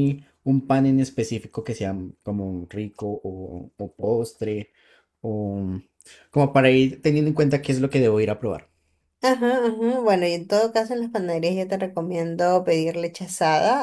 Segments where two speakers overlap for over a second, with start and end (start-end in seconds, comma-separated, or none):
none